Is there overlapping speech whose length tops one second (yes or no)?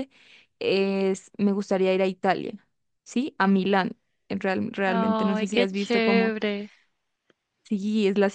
yes